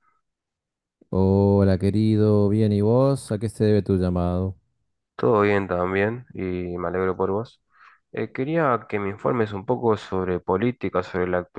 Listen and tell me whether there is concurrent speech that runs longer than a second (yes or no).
no